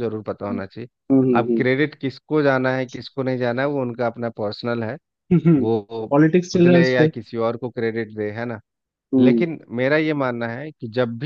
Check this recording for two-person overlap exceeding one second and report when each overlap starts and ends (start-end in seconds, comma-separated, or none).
none